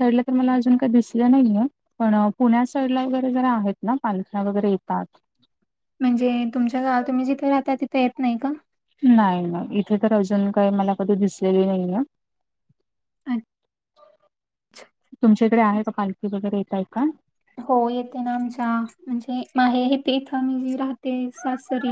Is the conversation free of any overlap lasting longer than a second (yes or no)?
yes